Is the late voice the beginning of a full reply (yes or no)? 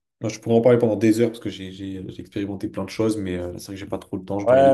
yes